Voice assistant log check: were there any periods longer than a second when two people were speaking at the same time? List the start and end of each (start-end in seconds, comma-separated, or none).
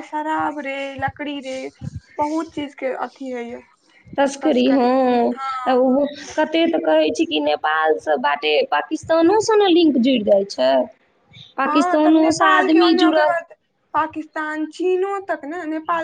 11.7-13.3